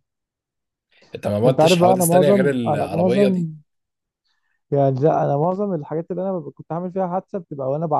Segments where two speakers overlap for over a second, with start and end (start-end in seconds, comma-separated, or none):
1.5-3.5